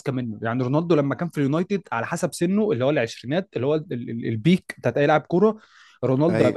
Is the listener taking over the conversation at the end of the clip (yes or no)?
no